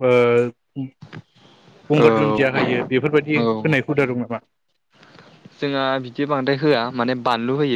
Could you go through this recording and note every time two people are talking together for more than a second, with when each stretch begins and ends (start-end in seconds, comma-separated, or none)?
2.0-3.6